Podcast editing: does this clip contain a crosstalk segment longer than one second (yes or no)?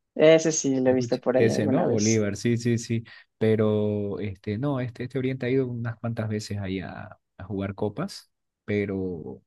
yes